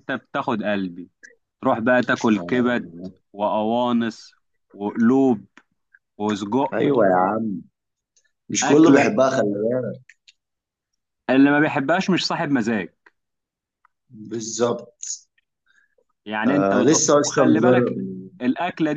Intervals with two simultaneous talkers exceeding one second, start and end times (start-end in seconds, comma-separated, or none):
16.5-18.0